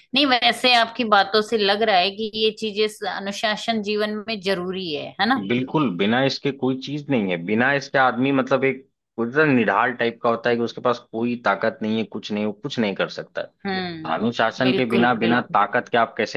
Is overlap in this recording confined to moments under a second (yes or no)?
no